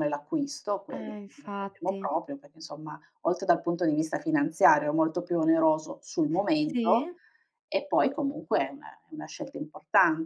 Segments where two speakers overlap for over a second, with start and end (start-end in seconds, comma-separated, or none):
0.9-2.1